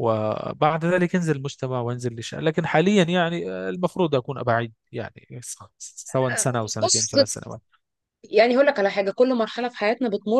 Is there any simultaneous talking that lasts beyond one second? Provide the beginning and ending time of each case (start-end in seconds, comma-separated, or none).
none